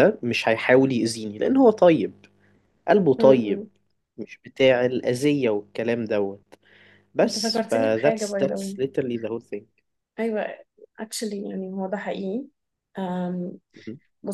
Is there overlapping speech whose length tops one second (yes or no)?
yes